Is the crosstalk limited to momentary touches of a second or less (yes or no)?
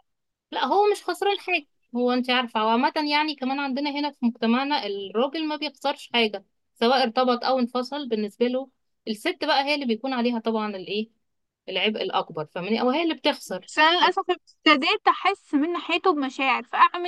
yes